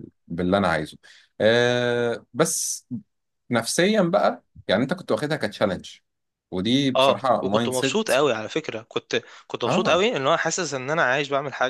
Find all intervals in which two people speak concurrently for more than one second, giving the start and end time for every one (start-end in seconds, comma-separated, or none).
7.0-8.2